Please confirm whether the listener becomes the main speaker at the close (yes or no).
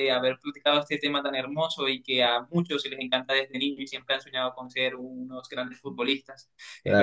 no